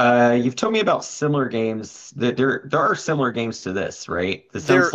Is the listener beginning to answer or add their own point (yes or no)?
no